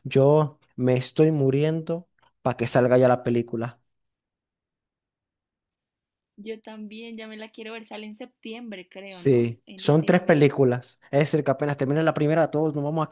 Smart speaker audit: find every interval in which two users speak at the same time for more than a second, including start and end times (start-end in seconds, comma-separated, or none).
9.1-10.6